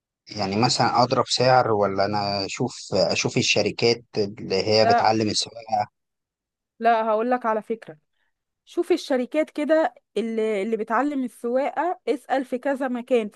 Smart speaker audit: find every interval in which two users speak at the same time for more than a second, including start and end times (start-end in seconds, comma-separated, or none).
none